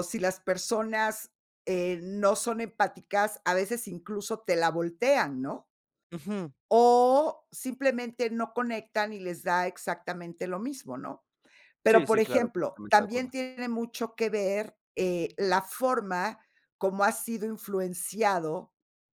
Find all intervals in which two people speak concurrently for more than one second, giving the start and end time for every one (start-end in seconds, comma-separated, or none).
11.9-13.3